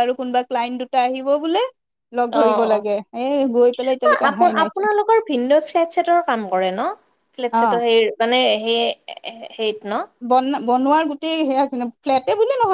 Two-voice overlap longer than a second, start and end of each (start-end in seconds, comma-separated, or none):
2.4-4.9